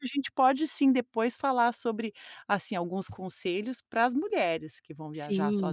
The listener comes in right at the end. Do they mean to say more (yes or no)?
yes